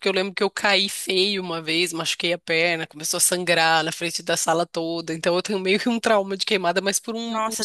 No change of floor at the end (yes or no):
yes